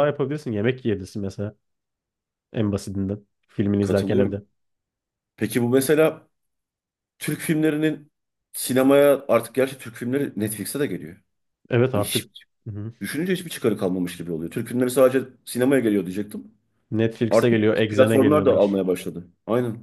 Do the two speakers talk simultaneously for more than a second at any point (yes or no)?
yes